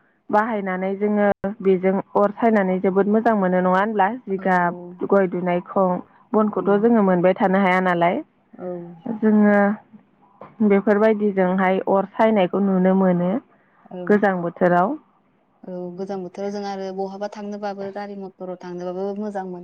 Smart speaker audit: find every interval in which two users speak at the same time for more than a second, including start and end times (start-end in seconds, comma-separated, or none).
none